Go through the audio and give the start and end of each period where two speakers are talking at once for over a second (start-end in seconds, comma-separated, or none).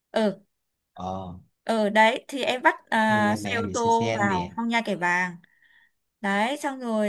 3.1-4.5